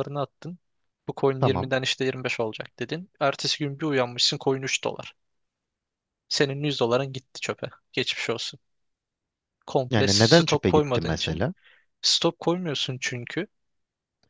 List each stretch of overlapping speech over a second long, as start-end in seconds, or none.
9.9-11.4